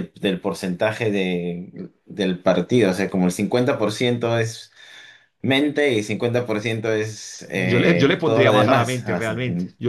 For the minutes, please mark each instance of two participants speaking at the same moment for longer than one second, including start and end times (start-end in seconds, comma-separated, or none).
7.5-9.4